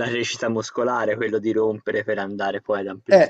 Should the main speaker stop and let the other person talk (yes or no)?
yes